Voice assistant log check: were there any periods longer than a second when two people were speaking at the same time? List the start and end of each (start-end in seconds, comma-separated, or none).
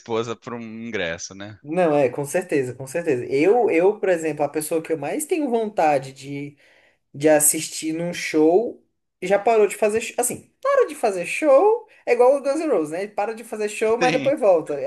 none